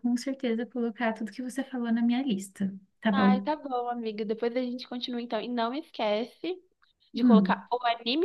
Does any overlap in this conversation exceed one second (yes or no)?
no